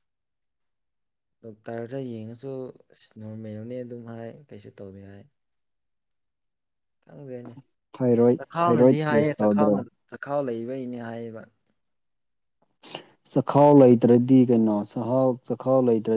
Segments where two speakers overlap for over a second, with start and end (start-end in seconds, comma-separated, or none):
8.4-9.8